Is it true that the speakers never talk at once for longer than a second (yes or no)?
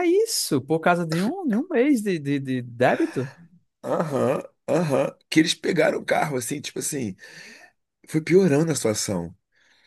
yes